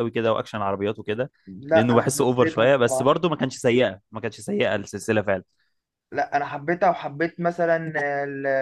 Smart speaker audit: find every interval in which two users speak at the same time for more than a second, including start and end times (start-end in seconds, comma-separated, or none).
1.7-3.2